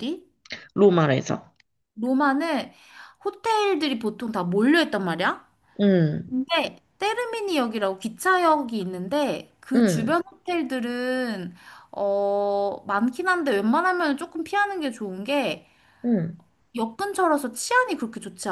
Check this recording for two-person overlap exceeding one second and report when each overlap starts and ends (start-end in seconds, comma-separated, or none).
none